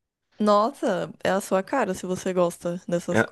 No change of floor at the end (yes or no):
no